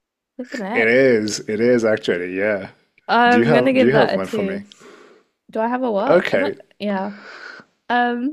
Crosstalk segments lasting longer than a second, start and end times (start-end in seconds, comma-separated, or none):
3.3-4.6